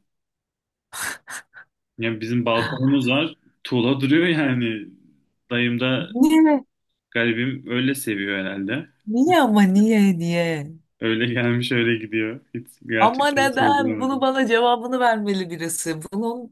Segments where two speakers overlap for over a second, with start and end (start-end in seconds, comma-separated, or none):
13.0-14.3